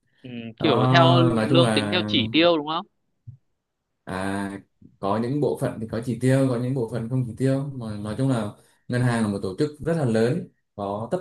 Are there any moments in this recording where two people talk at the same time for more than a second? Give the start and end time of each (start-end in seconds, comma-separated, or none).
0.6-2.0